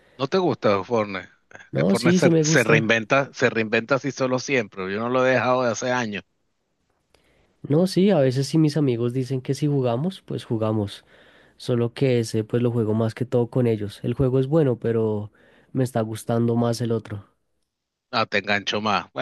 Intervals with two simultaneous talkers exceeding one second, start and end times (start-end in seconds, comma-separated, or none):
1.7-3.0